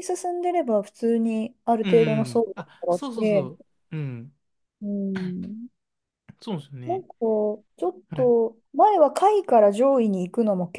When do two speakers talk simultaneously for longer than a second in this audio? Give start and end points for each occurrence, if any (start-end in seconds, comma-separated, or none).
1.8-3.5